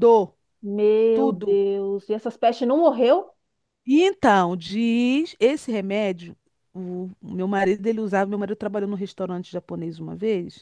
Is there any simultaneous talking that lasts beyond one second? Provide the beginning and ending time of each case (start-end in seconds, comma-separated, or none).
none